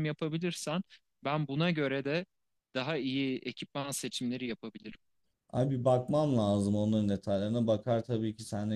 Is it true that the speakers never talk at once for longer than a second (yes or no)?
yes